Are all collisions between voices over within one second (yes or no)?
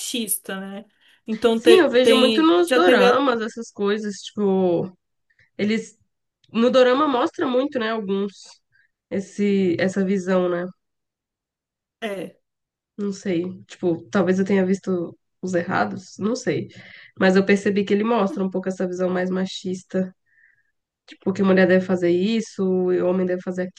no